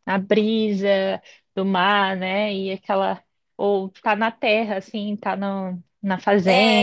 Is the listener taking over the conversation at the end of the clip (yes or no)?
yes